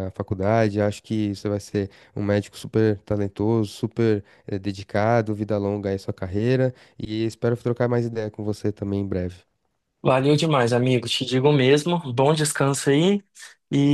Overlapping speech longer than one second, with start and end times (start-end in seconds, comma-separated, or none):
none